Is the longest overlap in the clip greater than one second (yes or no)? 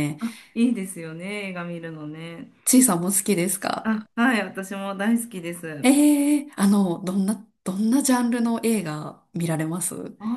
no